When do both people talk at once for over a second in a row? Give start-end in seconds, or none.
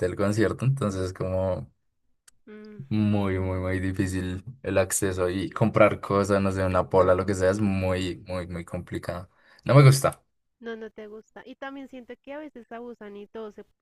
none